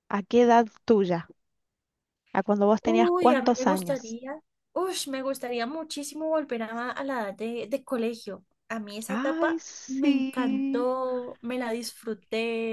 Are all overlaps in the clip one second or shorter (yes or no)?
no